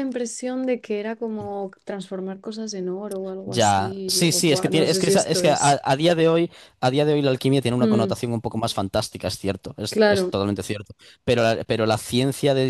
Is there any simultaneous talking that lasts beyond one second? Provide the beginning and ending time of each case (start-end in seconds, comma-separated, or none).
3.5-5.8